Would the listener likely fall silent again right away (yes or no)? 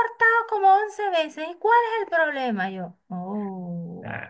no